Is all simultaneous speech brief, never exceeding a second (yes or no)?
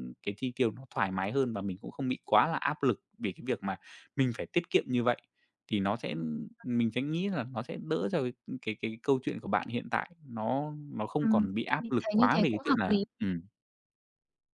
no